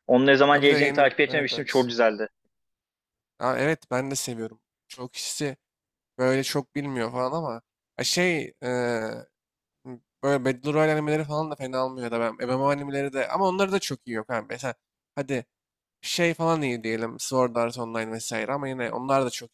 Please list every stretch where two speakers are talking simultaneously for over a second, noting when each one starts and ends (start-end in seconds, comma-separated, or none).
0.5-1.9